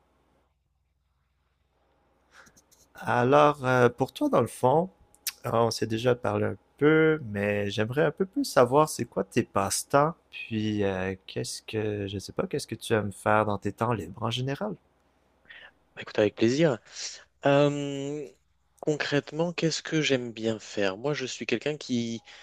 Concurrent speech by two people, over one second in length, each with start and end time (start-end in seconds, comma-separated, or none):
none